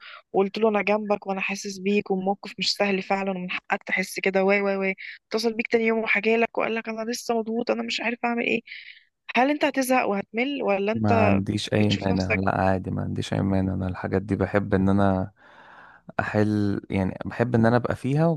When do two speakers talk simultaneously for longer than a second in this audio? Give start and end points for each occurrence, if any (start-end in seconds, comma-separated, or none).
10.9-12.4